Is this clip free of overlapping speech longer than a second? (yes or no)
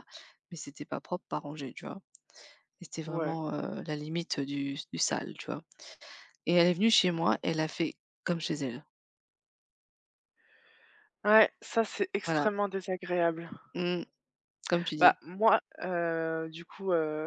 yes